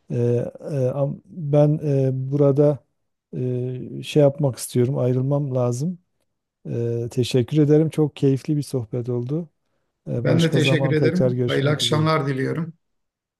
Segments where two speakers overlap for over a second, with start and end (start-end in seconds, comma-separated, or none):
10.2-12.0